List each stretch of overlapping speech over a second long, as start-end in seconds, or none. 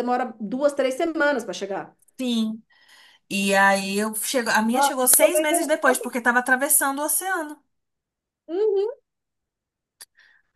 4.7-6.1